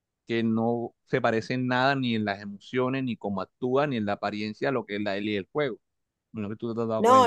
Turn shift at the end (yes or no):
yes